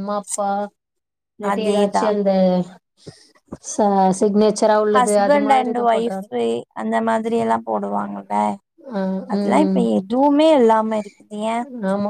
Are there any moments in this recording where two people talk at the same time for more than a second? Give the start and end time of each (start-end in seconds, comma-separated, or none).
none